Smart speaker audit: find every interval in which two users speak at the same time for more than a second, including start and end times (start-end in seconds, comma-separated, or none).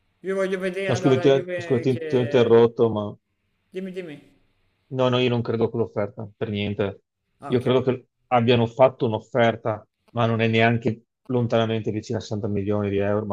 0.9-2.6